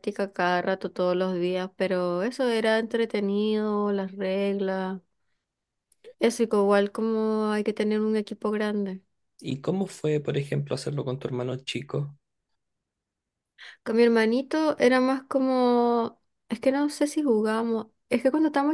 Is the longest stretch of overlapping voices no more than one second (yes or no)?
yes